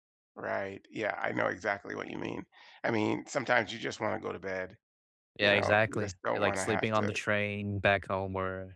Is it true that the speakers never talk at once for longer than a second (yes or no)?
no